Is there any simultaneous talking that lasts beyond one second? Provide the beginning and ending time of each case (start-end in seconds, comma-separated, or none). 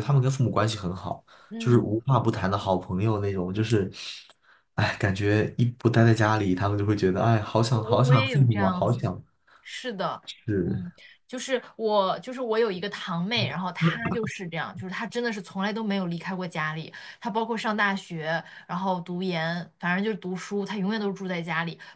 7.7-9.0